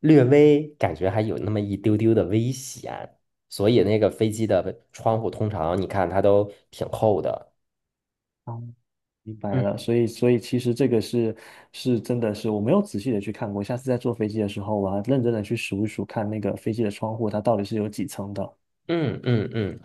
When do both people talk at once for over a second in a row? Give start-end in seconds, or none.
none